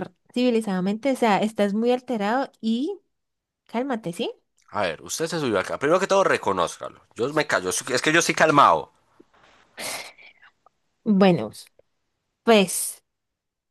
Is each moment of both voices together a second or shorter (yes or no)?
yes